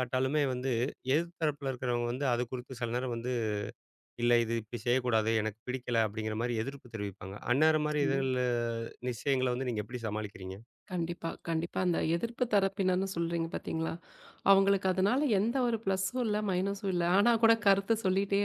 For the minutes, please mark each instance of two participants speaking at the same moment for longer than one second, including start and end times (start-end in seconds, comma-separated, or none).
none